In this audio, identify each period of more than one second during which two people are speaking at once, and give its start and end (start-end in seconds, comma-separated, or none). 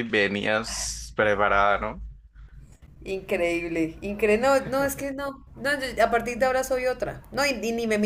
none